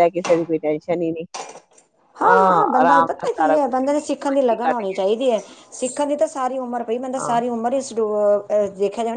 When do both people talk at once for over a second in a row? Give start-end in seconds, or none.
3.6-5.0